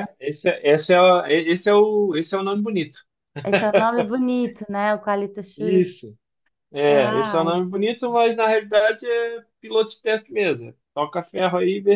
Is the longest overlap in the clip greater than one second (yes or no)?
no